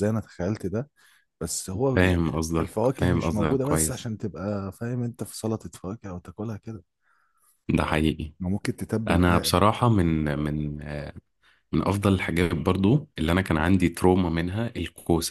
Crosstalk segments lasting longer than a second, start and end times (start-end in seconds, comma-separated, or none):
1.9-4.1